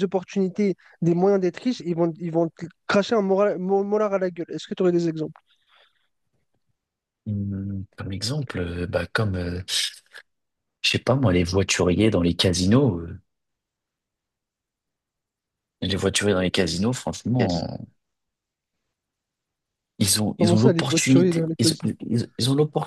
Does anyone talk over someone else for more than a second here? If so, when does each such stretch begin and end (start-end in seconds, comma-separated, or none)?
20.4-21.7